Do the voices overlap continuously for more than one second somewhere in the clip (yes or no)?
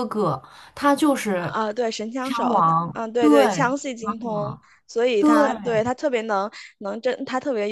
yes